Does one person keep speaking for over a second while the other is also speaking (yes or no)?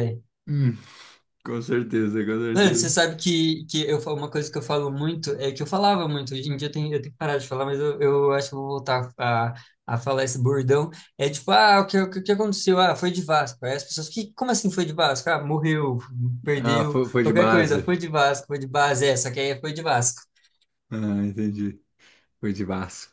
yes